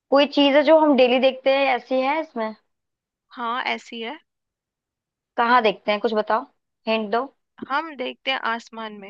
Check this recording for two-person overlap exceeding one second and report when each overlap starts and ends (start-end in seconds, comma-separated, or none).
none